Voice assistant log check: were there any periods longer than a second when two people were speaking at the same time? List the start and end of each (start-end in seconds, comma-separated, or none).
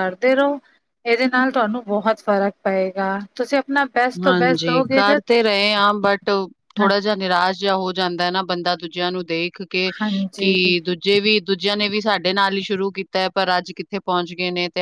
none